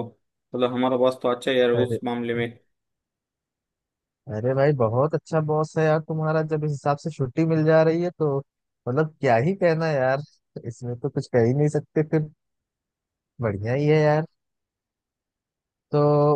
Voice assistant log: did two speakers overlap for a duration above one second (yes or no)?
no